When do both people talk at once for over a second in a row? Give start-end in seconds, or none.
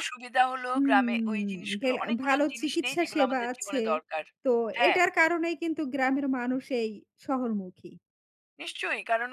0.7-3.8